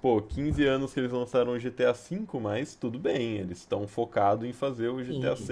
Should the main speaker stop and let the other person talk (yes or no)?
yes